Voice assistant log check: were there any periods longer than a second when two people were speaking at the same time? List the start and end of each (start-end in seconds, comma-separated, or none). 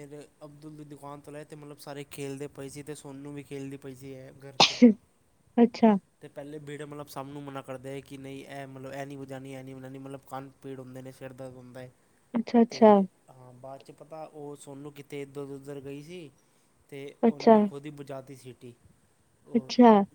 none